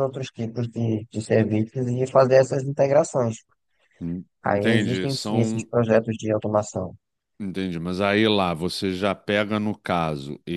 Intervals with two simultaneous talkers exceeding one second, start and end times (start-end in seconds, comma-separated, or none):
4.4-5.7